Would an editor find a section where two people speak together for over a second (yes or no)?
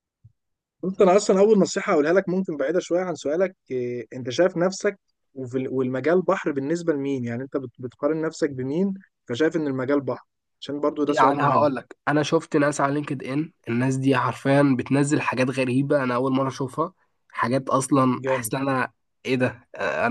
no